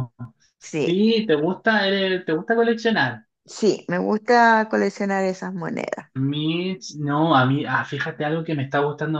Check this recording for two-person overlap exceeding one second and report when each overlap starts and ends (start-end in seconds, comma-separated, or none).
none